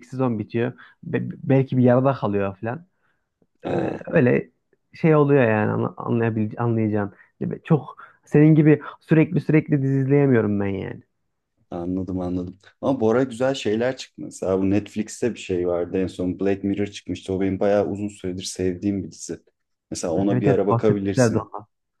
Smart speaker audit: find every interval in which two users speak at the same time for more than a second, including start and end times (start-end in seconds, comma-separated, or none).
20.2-21.5